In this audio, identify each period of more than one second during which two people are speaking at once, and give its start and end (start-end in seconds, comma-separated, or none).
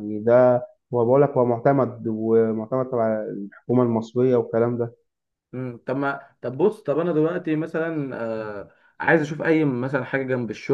none